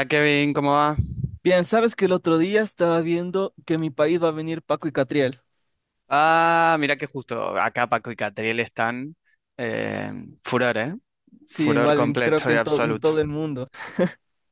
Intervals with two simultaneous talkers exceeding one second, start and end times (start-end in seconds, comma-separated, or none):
11.5-13.1